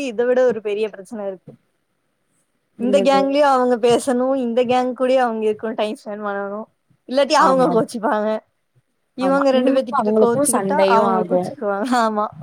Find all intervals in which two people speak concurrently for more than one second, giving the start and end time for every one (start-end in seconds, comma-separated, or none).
9.2-11.5